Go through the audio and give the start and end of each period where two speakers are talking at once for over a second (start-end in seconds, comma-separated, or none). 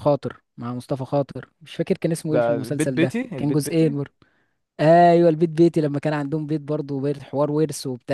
2.3-4.0